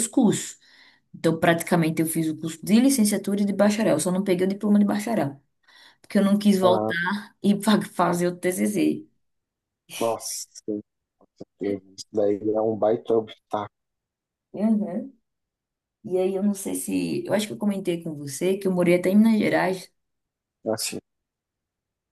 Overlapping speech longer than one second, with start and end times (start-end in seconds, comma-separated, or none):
none